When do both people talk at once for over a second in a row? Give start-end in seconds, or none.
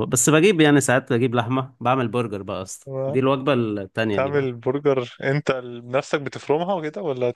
none